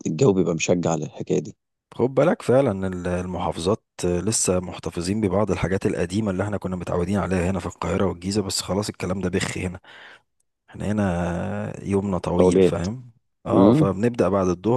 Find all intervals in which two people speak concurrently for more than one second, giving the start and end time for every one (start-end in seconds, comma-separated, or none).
none